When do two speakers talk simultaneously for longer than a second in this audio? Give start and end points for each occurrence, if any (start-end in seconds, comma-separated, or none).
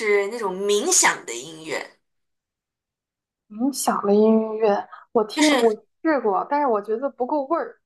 none